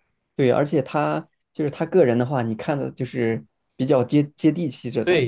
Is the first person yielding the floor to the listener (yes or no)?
yes